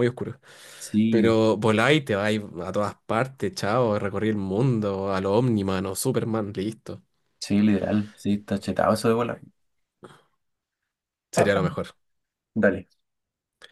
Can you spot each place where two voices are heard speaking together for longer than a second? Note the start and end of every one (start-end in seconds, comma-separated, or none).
none